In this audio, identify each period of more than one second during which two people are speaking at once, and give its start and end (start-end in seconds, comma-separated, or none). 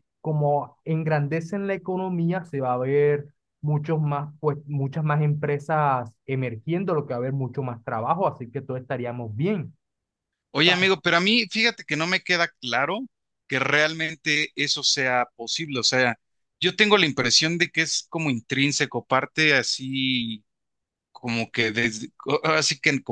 none